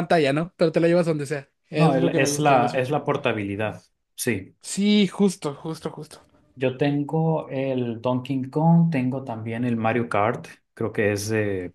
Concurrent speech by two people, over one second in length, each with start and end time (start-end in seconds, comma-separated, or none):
1.7-3.0